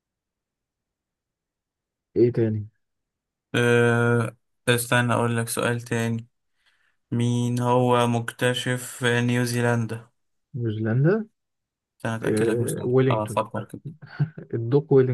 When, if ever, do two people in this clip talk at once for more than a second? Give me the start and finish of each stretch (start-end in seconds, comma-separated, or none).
12.2-13.5